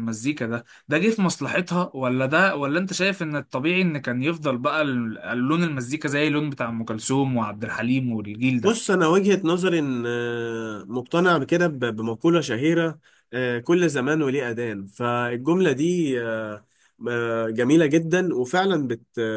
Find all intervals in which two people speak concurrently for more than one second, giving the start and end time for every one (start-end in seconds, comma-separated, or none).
none